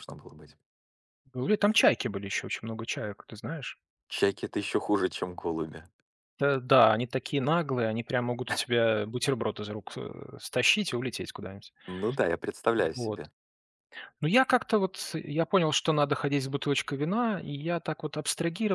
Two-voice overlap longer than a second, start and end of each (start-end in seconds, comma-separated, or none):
none